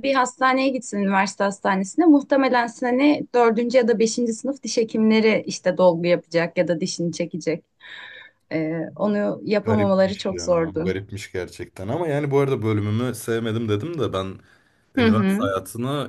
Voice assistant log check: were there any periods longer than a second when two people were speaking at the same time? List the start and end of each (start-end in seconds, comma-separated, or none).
9.7-10.9